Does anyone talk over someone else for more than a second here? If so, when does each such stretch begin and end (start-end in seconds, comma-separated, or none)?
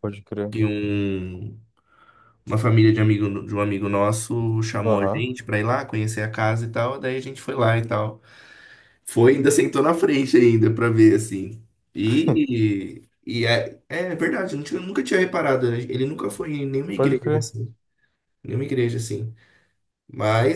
none